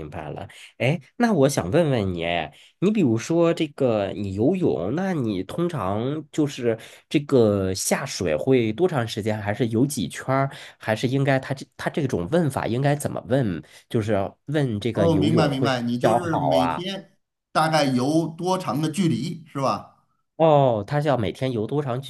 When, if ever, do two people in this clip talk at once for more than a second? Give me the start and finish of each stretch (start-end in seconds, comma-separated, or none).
14.9-16.8